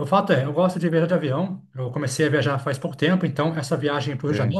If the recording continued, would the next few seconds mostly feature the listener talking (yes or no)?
no